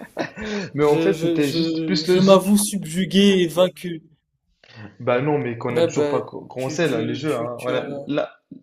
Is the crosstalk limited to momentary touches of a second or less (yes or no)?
no